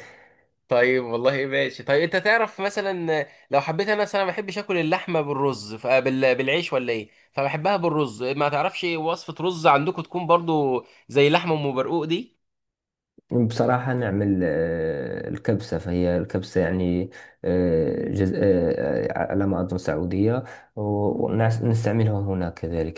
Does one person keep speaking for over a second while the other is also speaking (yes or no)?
no